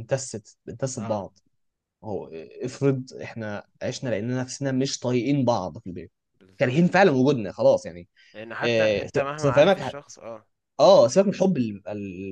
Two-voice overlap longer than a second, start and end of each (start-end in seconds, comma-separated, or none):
8.6-10.0